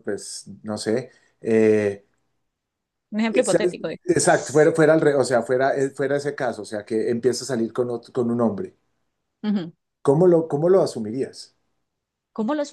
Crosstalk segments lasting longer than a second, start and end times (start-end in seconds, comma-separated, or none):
none